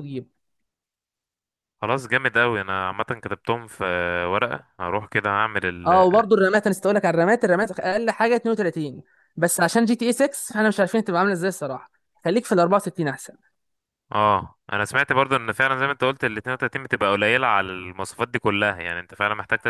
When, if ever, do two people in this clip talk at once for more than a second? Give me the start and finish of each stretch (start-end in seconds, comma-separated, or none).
none